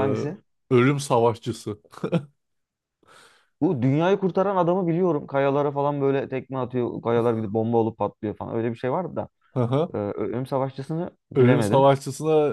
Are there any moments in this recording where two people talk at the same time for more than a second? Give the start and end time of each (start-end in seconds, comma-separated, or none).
none